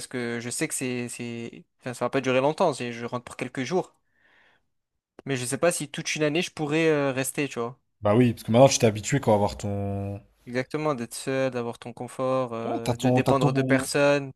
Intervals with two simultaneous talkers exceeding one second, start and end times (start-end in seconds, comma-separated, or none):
12.7-13.9